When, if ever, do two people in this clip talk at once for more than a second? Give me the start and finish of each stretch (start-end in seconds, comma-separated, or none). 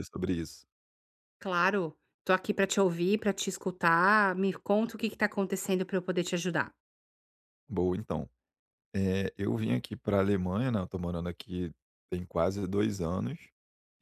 none